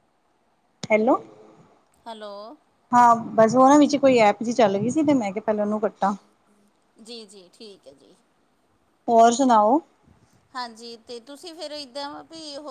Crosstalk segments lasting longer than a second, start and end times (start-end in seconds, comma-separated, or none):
none